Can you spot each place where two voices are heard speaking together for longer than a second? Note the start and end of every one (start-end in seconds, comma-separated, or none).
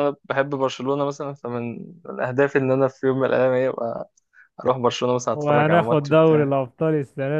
5.3-6.5